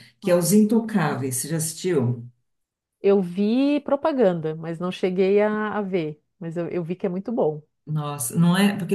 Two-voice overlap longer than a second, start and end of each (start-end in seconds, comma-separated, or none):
none